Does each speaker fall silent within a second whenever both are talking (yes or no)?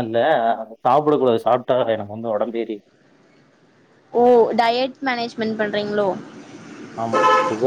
yes